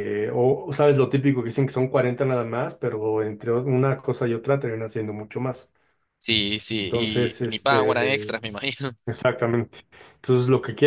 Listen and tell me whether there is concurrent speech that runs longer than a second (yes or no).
yes